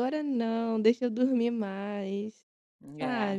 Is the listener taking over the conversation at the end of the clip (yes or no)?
yes